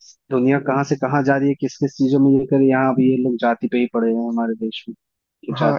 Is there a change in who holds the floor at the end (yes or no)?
yes